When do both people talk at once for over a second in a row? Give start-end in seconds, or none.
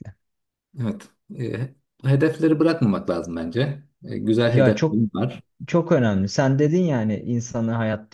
none